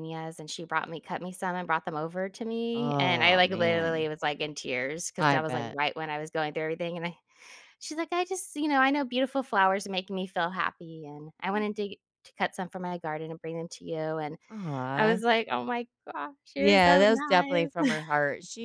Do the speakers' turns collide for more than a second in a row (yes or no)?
yes